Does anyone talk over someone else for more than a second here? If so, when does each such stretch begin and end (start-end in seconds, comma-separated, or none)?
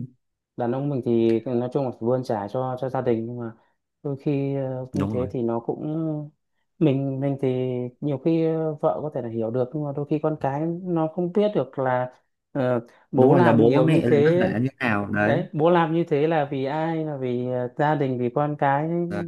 13.1-14.5